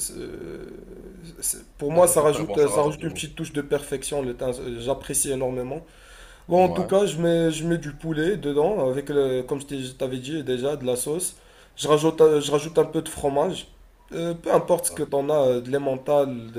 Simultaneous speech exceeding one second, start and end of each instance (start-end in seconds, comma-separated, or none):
1.9-3.2